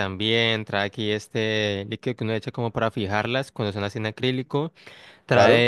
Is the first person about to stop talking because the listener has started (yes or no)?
no